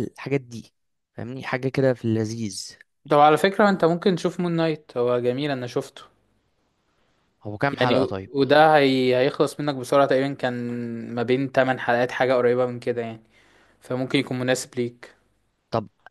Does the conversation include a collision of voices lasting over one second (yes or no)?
no